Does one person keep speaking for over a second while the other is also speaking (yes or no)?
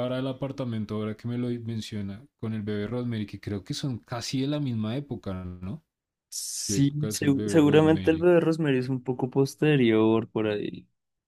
yes